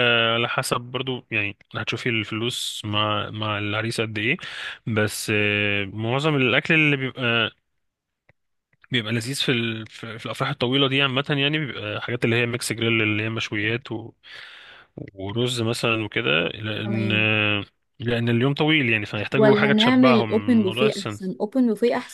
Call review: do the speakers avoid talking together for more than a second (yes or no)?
no